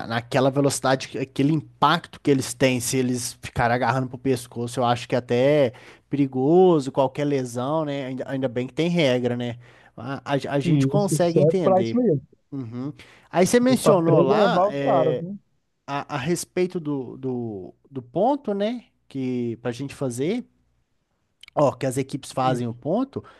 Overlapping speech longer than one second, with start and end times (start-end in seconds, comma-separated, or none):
10.6-12.0, 13.7-15.2